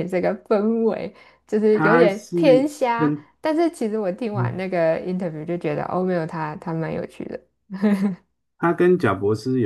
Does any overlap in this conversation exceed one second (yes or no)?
yes